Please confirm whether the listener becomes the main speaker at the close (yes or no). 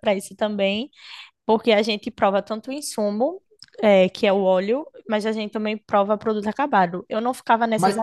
no